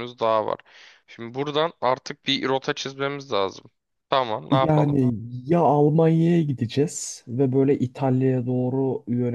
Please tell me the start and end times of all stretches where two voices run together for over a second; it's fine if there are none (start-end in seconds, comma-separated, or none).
none